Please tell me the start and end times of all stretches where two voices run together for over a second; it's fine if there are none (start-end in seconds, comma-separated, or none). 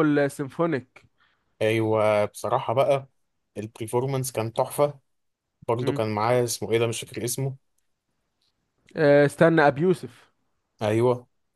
none